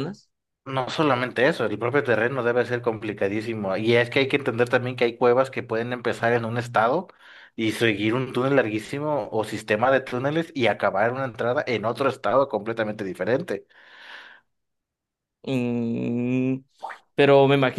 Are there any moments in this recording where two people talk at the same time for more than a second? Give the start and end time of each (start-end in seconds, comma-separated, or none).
none